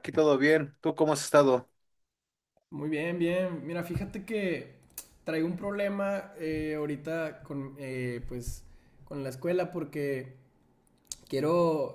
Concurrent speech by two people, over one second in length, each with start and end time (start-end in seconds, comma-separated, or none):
none